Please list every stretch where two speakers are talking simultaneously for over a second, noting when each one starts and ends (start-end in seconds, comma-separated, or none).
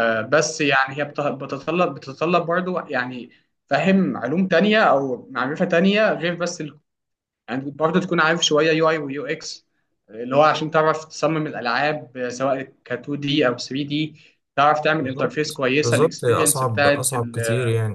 15.0-17.4